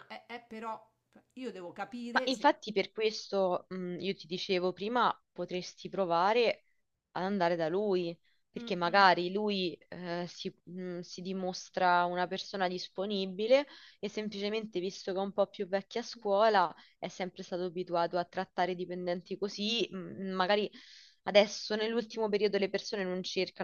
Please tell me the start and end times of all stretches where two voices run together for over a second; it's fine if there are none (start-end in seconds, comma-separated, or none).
none